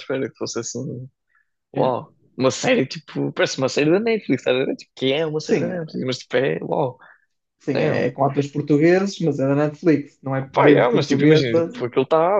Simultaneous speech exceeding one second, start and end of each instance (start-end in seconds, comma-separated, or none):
10.5-11.7